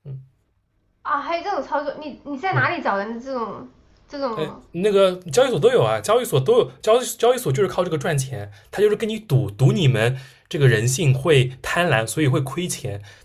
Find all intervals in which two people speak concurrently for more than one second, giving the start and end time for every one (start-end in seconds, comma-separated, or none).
none